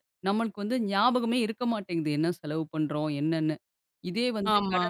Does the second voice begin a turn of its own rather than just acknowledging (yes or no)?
no